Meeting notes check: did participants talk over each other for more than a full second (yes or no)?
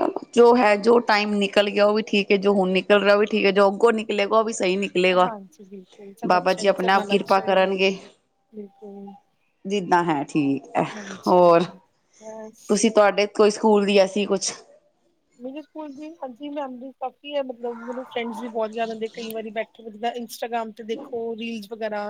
yes